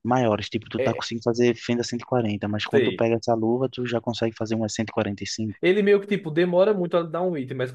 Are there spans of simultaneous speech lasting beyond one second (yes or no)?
no